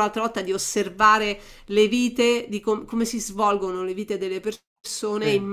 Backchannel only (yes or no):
yes